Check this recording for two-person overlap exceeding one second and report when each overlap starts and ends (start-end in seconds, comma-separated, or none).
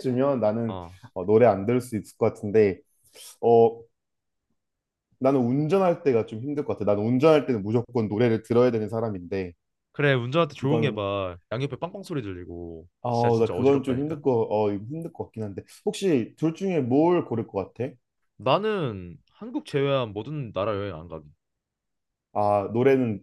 13.0-14.2